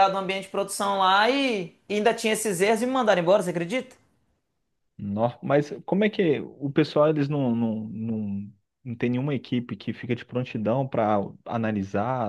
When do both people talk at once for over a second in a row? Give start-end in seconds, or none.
none